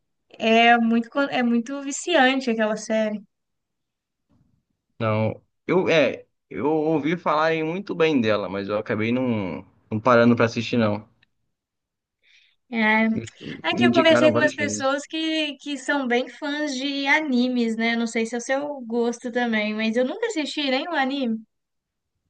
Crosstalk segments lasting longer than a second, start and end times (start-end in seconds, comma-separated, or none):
13.7-15.0